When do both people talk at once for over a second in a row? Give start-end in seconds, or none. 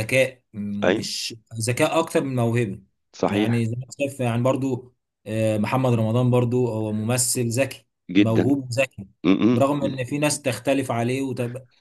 none